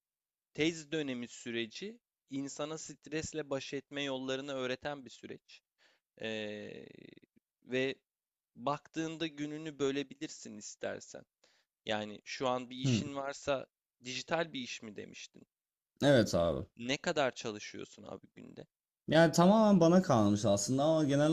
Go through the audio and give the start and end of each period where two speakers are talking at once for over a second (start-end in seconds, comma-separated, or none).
none